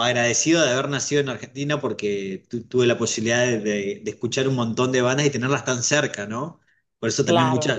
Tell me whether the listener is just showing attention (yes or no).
yes